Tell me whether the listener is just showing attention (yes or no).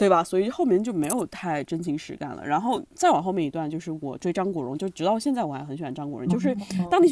yes